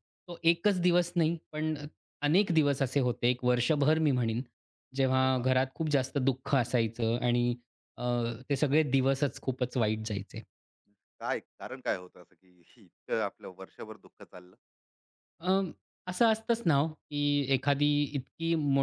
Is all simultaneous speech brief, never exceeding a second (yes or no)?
yes